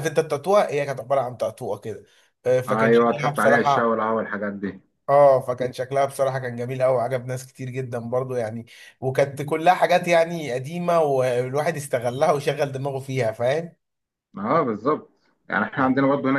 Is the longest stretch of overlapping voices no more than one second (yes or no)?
no